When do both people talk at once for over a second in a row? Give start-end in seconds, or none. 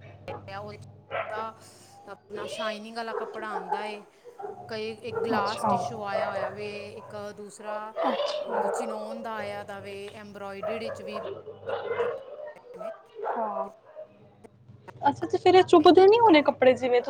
none